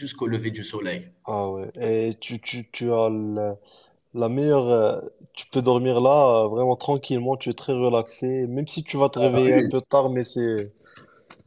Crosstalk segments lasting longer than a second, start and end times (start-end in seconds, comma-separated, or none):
none